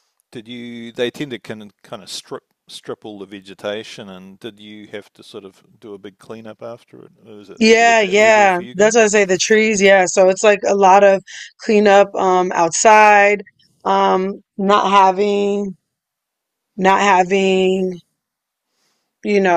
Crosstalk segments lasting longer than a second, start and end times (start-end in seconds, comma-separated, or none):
7.6-9.0